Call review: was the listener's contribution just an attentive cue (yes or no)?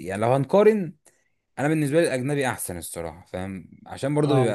yes